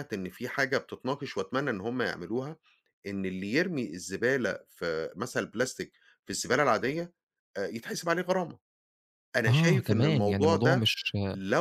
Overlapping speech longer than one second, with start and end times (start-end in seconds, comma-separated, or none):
9.5-10.9